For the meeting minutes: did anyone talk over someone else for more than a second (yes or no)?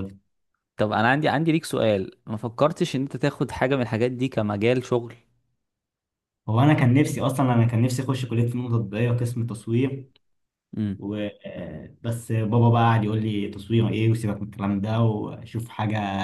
no